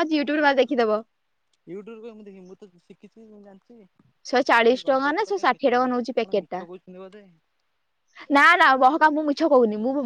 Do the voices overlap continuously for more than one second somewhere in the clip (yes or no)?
yes